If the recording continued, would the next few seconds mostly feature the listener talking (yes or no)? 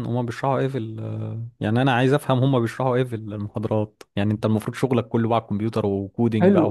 yes